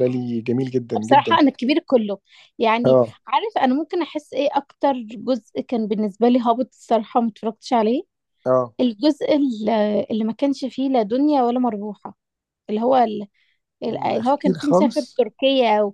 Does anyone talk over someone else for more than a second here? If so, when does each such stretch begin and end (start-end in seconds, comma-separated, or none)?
13.9-15.2